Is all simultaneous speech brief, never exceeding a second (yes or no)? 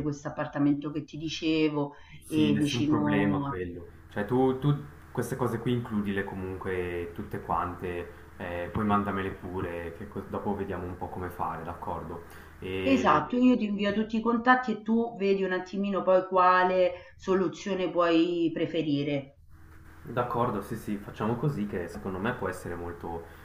no